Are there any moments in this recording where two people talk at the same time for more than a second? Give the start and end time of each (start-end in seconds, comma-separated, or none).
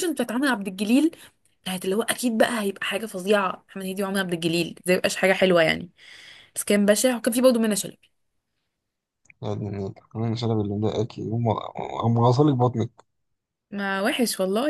none